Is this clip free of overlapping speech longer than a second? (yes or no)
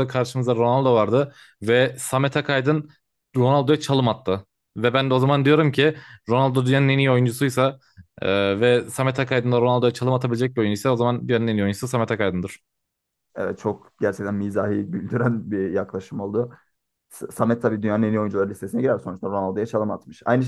yes